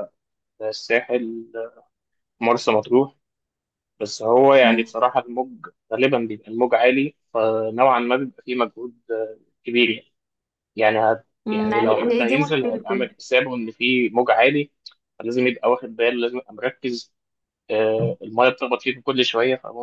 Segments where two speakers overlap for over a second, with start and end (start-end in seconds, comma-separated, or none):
11.4-13.1